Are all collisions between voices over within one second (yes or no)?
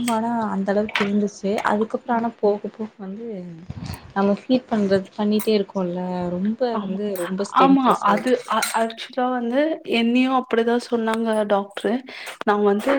yes